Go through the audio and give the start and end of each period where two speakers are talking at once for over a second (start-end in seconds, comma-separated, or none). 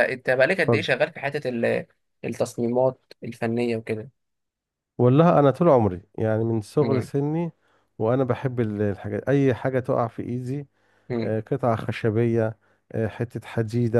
none